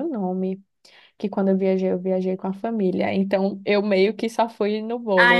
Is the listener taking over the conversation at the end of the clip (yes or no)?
yes